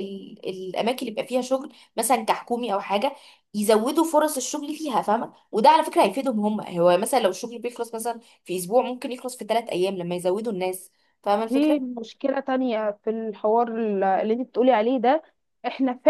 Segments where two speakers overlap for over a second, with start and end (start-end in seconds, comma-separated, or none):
none